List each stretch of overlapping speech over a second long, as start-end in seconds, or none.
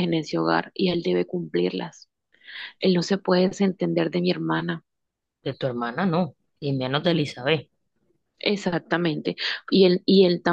none